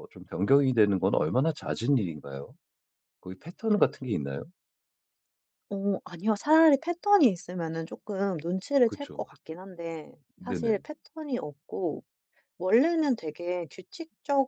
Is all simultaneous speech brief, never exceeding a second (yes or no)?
yes